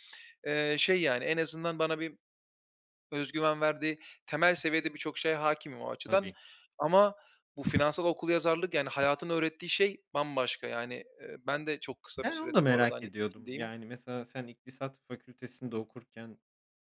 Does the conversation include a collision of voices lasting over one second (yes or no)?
yes